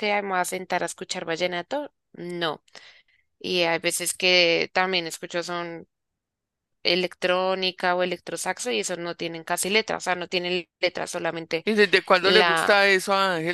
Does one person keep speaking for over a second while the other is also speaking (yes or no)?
no